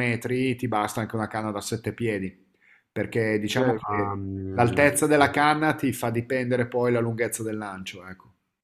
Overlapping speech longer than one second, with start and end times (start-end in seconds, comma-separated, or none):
3.4-5.2